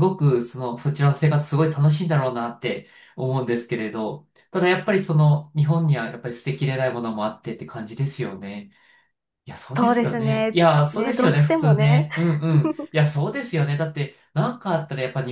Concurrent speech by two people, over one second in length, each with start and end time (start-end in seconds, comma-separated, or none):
9.8-12.1